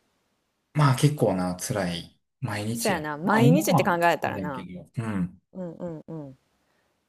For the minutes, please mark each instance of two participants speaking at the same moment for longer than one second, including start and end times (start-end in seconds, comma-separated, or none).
2.7-4.7